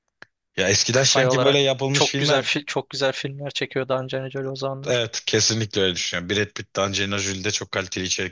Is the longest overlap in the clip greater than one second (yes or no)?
yes